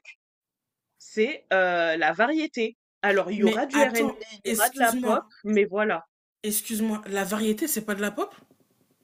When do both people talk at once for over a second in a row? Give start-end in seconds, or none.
3.4-5.3